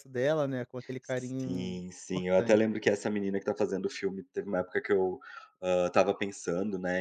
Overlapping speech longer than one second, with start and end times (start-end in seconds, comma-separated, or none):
1.0-2.6